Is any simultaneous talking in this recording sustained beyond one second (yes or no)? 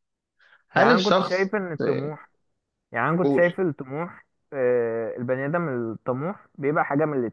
yes